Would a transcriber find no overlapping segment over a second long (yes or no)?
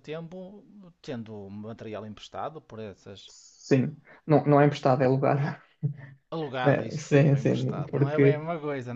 no